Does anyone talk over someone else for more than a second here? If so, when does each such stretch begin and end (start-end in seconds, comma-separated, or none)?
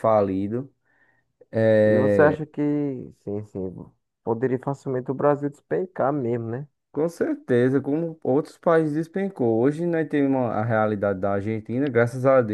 none